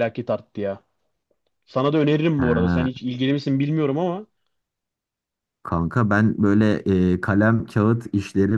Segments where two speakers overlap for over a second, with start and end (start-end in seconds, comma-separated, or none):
none